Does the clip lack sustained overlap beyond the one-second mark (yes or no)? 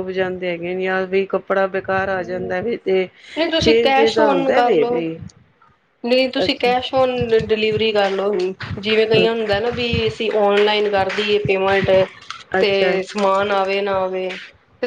no